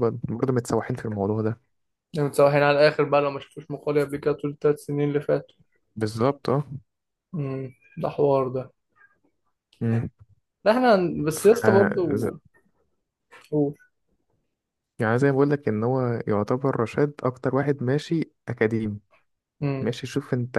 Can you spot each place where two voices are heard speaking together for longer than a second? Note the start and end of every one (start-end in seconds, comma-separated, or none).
none